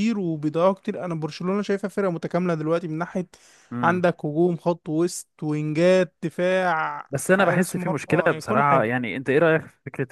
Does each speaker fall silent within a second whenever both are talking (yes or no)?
no